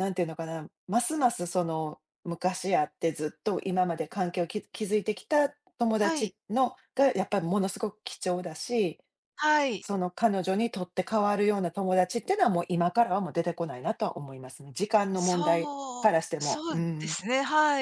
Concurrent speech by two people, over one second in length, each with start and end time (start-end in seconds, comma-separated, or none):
15.2-17.2